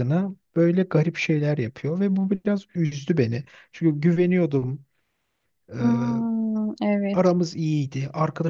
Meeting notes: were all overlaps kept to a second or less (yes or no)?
yes